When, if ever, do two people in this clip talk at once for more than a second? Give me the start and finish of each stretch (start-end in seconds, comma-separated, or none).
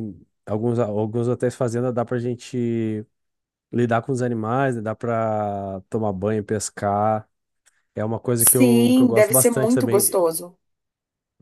8.4-10.2